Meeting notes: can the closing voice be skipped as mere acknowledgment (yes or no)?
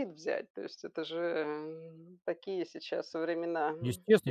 no